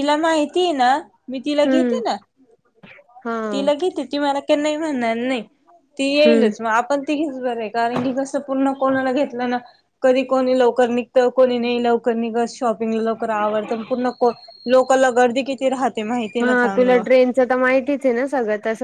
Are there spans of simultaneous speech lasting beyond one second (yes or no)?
no